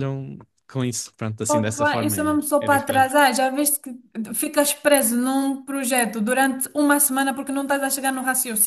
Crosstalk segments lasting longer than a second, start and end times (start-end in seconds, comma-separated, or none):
1.5-3.1